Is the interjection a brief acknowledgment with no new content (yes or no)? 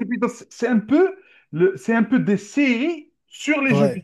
no